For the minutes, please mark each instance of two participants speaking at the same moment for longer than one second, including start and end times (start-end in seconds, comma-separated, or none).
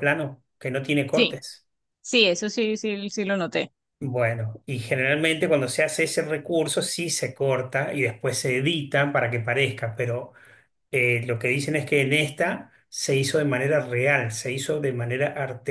none